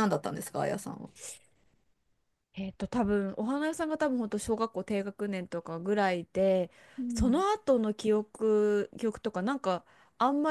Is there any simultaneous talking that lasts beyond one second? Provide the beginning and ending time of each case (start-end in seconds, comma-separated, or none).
none